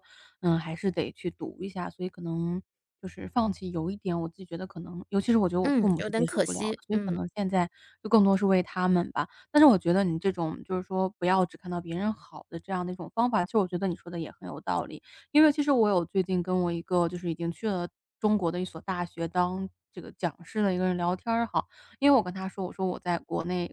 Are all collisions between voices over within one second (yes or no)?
no